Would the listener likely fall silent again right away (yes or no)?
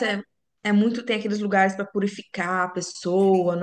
no